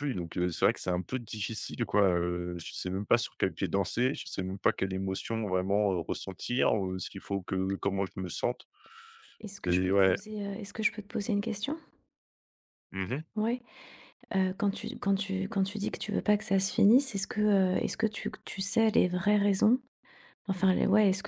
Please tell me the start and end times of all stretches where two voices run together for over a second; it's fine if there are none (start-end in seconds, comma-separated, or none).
none